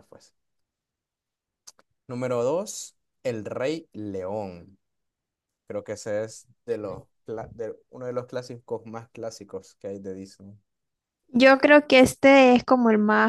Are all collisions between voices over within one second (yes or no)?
yes